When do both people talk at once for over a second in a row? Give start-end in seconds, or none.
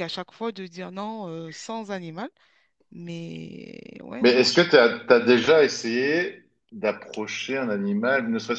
none